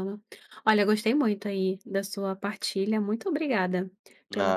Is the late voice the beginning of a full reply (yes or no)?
yes